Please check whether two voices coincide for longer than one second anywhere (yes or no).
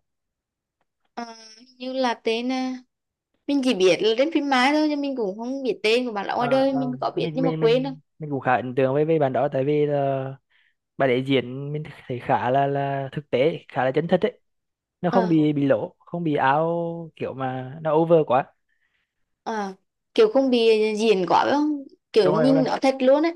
yes